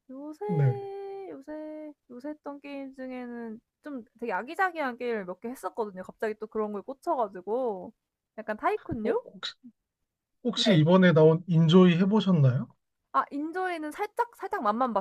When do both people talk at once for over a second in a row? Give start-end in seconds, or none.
none